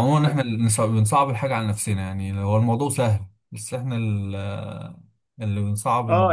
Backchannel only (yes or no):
no